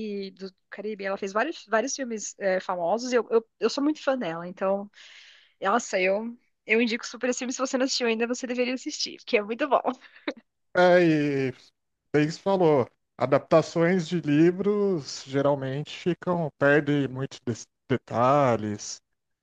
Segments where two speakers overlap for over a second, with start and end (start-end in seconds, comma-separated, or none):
none